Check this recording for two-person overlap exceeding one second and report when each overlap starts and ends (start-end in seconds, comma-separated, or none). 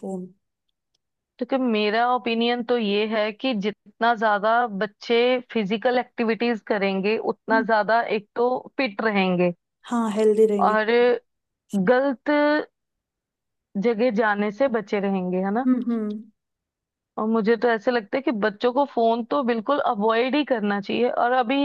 none